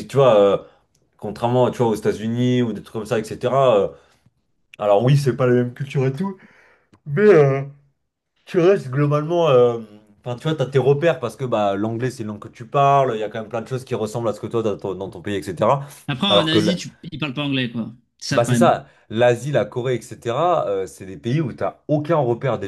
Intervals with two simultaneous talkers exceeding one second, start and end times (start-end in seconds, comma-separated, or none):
none